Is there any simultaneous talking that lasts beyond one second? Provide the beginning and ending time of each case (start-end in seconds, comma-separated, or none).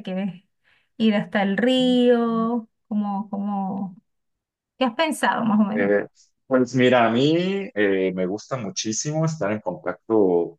none